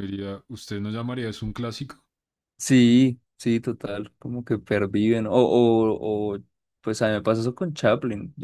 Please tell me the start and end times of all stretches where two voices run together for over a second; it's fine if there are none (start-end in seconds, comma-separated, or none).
none